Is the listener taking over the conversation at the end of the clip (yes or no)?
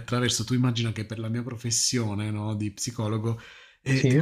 no